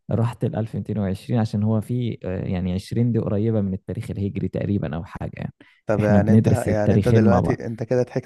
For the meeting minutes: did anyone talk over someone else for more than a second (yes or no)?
yes